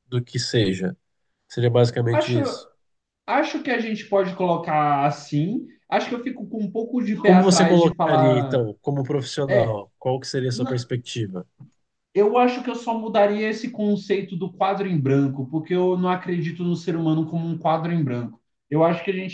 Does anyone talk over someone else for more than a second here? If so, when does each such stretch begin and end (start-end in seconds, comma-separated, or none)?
7.2-8.7